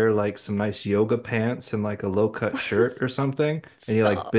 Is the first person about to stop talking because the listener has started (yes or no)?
no